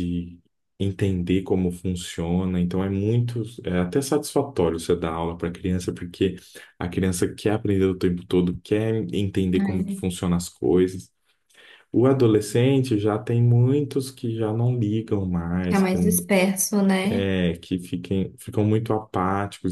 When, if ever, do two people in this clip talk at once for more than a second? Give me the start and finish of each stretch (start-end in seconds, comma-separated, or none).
none